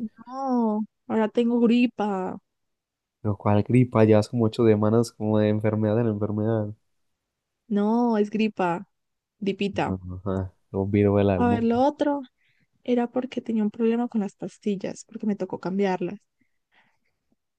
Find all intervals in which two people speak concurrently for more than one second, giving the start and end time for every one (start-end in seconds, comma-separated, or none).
none